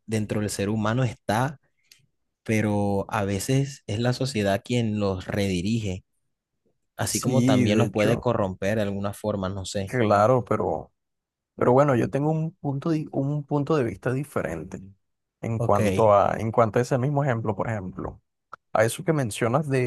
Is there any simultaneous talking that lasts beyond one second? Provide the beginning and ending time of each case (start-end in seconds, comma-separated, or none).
7.0-8.3